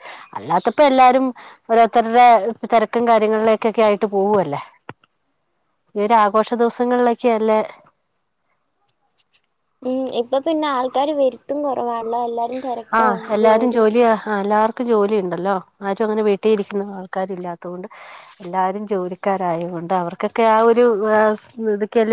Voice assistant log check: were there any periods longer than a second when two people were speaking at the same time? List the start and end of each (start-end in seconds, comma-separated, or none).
none